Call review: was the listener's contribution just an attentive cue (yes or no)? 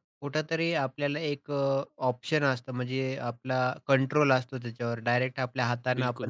yes